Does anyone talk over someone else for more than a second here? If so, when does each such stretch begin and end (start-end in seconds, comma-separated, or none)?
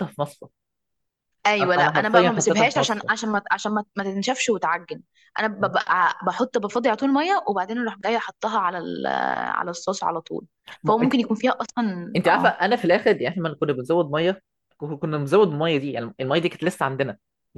1.6-3.1